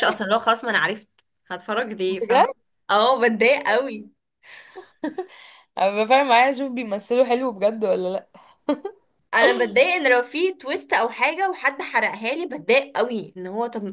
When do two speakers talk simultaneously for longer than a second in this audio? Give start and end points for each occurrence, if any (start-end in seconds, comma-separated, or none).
none